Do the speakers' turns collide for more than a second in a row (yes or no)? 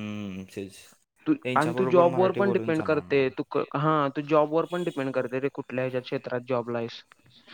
yes